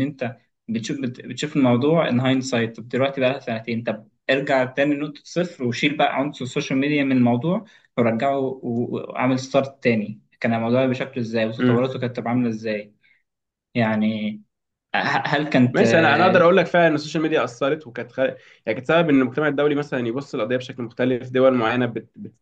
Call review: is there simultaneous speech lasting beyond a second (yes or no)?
no